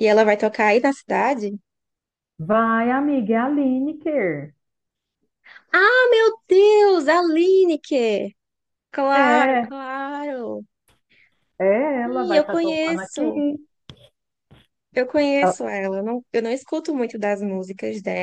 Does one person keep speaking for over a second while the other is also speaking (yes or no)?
yes